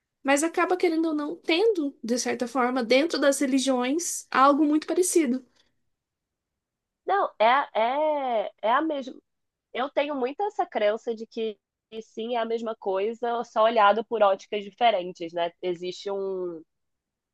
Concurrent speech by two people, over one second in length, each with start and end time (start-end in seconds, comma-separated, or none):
none